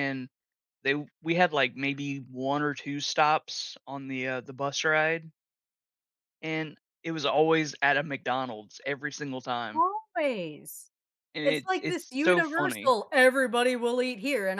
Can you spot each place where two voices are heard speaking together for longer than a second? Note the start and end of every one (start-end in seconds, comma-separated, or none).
11.4-12.9